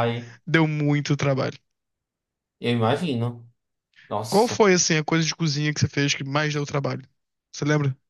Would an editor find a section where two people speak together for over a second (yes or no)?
no